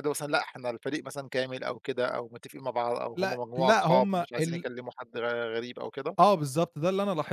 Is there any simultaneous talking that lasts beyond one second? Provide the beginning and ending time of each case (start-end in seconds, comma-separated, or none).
3.1-4.7